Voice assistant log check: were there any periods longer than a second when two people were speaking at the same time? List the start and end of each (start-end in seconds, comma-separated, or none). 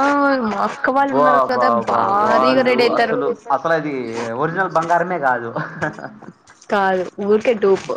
1.1-3.2